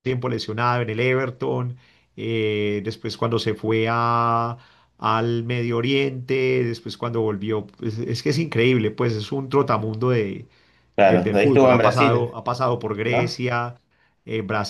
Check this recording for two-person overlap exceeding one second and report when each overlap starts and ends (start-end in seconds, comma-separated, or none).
11.0-12.3